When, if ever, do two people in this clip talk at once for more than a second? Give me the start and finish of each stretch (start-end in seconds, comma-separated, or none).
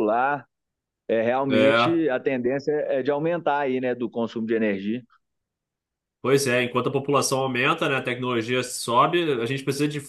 none